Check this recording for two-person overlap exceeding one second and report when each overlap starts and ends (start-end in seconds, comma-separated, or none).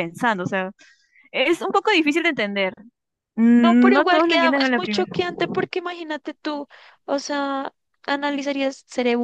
3.6-5.1